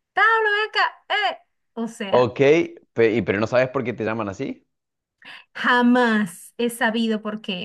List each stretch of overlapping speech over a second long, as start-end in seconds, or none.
none